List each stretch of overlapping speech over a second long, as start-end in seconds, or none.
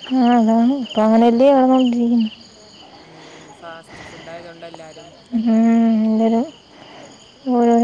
none